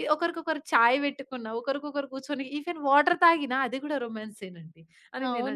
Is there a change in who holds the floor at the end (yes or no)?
yes